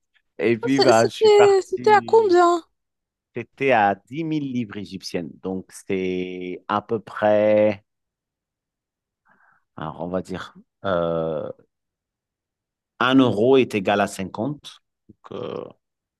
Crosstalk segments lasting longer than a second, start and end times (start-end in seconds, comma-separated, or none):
0.7-2.4